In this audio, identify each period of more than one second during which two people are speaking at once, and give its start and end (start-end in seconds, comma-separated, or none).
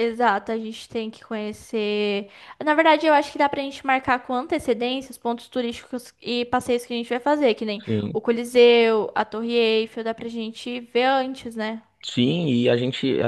none